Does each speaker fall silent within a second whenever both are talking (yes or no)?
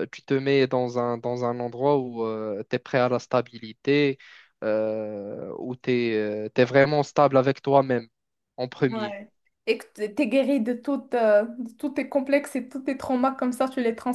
yes